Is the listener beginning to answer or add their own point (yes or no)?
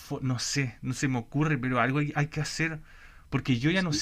no